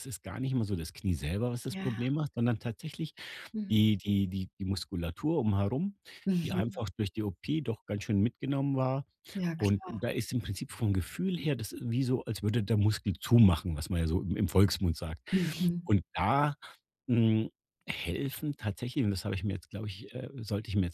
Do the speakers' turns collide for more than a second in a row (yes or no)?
no